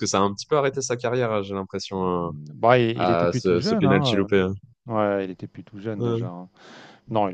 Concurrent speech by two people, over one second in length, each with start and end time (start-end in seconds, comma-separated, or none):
3.0-4.3